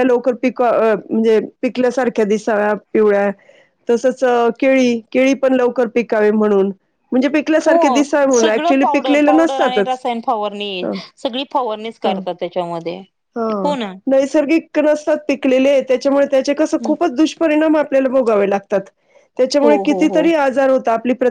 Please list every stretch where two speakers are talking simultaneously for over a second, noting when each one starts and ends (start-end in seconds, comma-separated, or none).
7.7-10.0